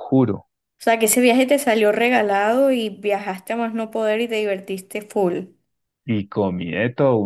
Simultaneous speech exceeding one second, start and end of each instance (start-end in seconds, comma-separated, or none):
none